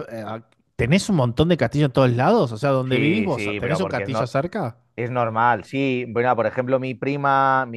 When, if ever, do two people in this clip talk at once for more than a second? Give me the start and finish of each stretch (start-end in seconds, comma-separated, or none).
2.9-4.2